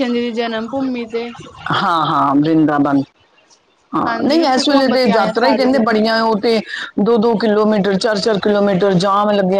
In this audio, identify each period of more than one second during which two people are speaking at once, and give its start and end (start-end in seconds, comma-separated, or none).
4.1-6.0